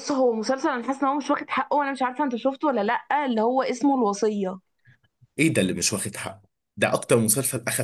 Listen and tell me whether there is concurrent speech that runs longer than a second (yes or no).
no